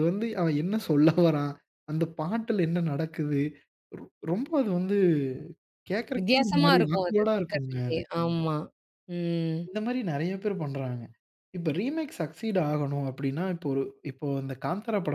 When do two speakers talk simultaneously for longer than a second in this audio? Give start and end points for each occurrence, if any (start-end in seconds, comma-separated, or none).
6.2-8.0